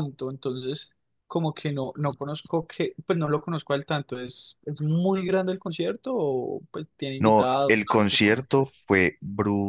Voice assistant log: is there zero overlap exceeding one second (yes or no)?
no